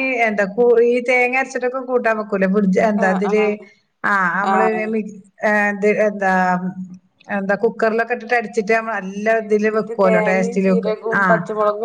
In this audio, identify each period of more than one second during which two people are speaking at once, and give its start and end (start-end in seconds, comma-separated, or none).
9.3-11.2